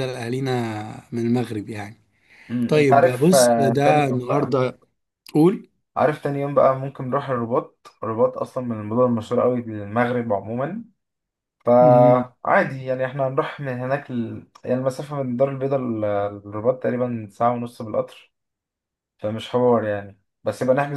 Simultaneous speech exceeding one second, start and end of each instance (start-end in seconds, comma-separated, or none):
2.7-4.6